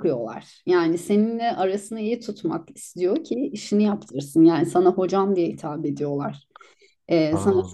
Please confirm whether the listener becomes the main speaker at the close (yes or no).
no